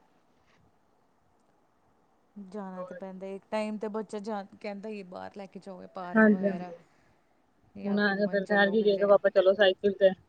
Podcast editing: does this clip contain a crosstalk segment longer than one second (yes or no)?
yes